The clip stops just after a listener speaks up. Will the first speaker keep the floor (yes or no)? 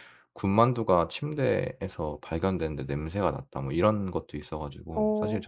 yes